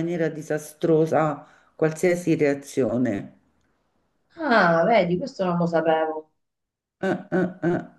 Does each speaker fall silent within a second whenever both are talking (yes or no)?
yes